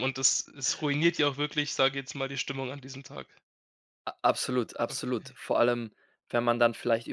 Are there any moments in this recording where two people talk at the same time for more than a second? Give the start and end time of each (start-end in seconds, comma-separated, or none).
none